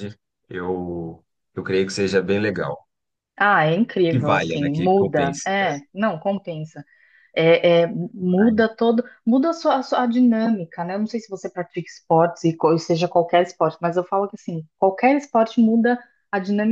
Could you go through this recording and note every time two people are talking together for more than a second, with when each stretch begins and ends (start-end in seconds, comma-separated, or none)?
4.1-5.5